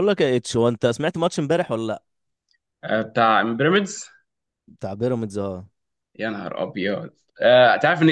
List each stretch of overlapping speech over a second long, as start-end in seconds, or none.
none